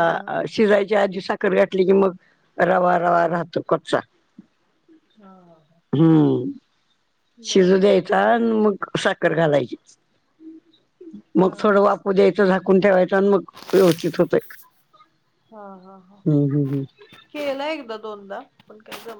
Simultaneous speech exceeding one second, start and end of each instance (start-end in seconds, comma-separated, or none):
none